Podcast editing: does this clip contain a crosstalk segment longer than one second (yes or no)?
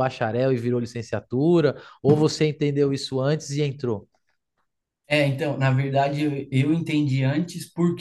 no